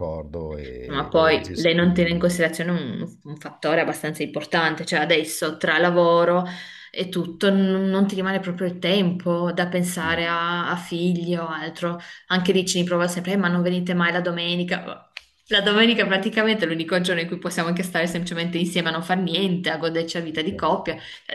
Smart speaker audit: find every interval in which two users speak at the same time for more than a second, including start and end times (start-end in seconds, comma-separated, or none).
0.8-2.4